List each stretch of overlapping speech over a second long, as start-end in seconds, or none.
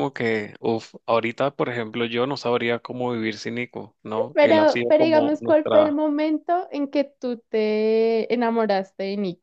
4.3-6.0